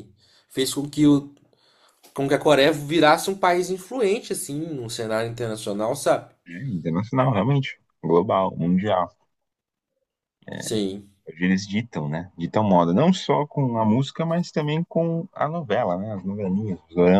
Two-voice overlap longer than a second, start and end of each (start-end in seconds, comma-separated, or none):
none